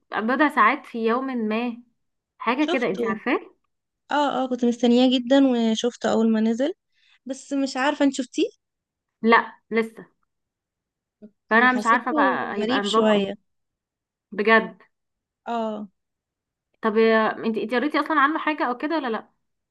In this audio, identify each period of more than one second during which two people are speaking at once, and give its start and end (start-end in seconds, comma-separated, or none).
11.5-13.3